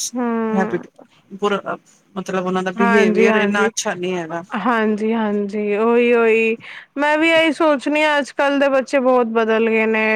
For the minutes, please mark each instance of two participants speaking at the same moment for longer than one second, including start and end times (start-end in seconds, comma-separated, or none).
none